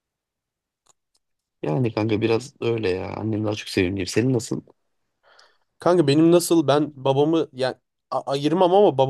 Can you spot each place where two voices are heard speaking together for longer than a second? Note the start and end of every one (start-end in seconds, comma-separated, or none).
none